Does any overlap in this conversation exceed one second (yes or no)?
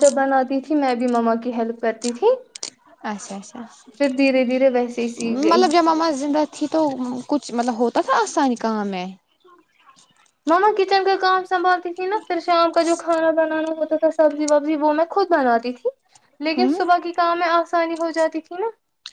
no